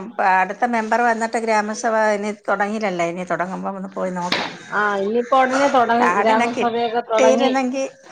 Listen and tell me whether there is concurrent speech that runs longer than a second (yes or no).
yes